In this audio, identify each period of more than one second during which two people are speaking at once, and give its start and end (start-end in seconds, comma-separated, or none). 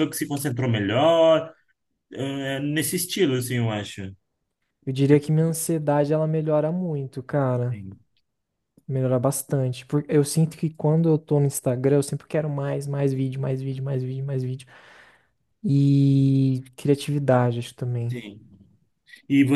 none